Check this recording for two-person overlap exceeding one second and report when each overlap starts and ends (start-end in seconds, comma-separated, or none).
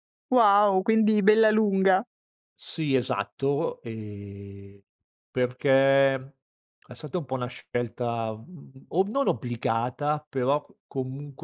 none